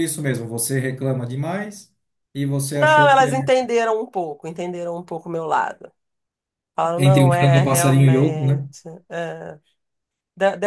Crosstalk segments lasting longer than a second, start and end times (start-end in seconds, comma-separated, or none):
7.0-8.7